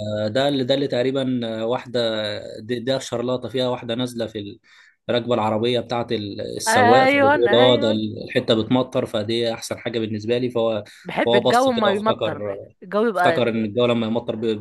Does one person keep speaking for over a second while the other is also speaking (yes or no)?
yes